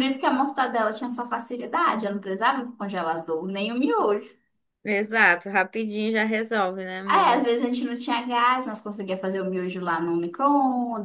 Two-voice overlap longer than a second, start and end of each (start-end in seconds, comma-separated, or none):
none